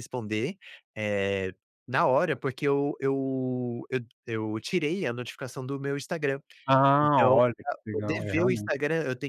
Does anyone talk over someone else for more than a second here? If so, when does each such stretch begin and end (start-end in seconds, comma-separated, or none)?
7.0-8.7